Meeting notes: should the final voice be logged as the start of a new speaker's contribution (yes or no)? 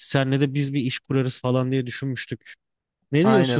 yes